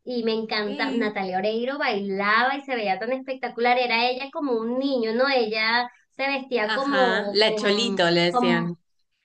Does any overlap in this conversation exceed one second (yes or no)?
yes